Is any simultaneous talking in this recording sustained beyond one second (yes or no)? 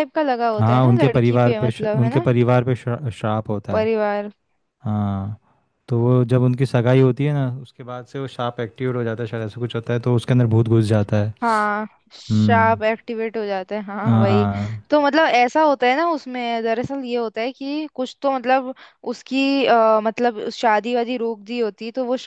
yes